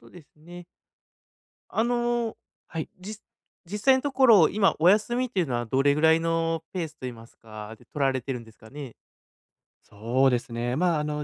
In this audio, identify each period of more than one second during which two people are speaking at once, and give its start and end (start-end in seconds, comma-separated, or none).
none